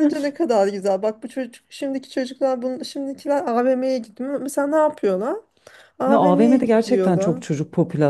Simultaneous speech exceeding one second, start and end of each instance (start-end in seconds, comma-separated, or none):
6.0-7.4